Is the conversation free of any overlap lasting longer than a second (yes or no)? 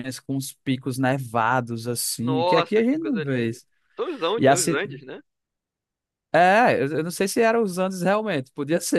no